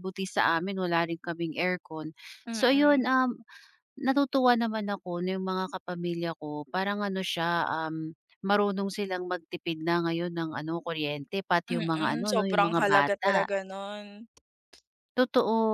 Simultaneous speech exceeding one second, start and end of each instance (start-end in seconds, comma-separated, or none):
11.7-13.5